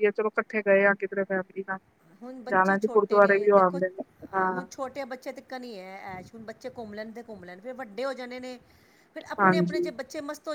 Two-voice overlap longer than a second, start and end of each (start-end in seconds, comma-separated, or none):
2.5-3.8